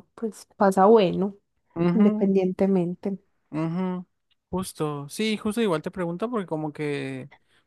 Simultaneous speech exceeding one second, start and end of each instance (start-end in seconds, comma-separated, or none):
none